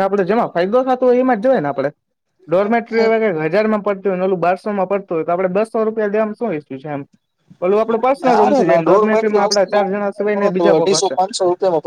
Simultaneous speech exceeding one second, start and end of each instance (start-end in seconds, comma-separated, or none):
8.2-9.8